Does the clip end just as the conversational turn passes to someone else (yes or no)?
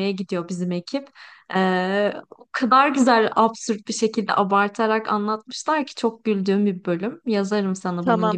yes